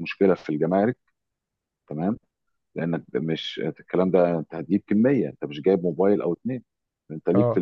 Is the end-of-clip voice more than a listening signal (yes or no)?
no